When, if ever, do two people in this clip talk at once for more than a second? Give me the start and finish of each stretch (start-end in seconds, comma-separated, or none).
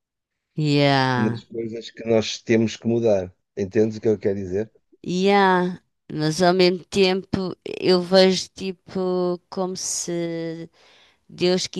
none